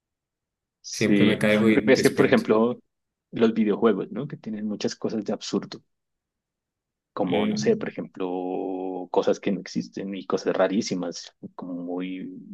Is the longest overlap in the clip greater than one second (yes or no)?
yes